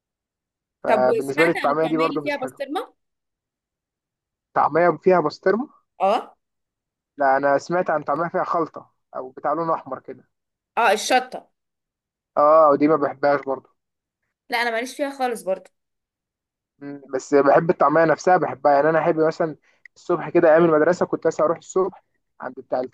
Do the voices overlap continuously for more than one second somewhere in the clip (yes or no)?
yes